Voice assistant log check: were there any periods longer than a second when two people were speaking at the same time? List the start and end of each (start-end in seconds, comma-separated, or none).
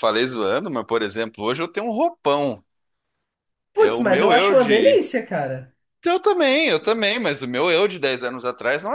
3.8-5.0